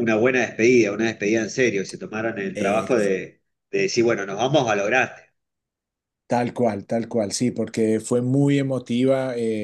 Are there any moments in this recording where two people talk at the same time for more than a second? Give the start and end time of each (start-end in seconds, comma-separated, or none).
none